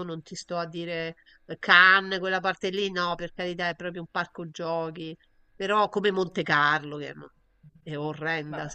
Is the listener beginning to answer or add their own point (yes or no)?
no